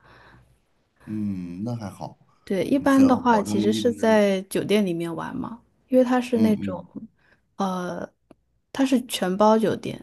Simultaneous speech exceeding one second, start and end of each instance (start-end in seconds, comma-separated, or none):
2.9-4.3